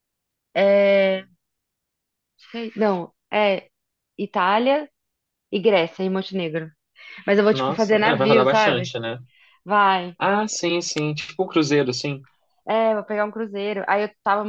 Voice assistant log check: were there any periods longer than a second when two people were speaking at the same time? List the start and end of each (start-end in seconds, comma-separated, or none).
7.5-8.9